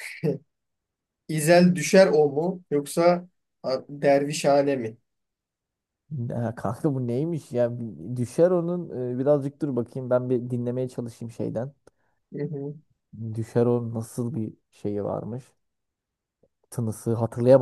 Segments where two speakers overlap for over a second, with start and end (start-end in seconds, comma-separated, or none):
none